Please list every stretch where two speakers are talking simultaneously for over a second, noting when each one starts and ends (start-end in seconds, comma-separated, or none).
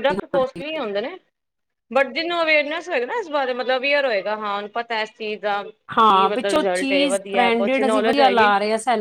6.0-8.5